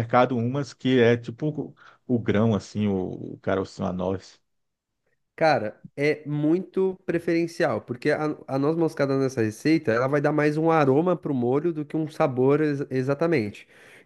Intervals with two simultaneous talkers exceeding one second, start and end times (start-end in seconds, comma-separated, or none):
none